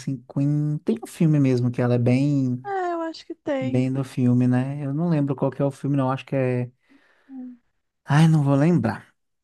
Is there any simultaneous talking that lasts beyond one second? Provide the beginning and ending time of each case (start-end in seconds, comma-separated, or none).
none